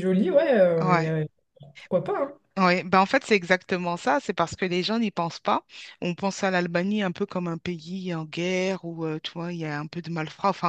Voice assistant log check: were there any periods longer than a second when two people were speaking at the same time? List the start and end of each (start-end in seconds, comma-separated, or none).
none